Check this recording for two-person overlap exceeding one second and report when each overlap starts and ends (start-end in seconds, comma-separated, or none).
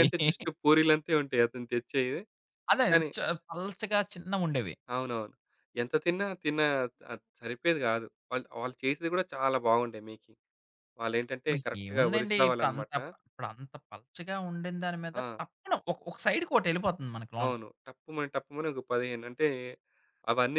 11.5-12.9